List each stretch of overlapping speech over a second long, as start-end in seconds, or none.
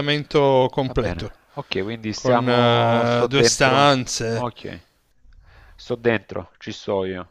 2.1-4.5